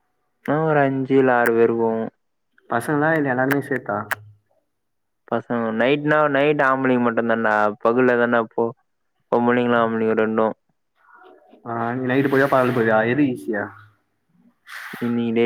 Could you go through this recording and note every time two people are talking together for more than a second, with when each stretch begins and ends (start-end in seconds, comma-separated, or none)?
none